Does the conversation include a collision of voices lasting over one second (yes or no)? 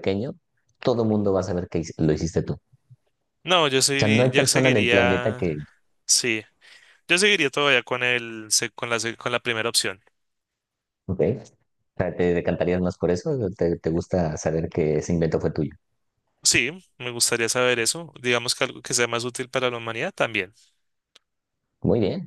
yes